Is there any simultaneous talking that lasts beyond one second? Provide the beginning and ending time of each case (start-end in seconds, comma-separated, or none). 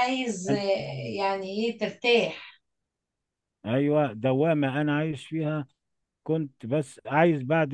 none